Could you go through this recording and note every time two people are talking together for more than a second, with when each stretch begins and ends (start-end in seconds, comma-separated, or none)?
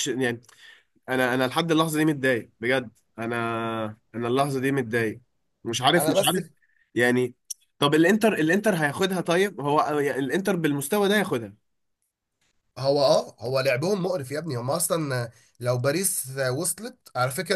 none